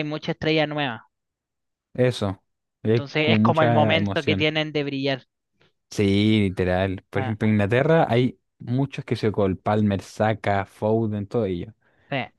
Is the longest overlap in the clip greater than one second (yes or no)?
yes